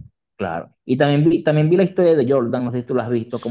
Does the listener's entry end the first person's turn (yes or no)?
no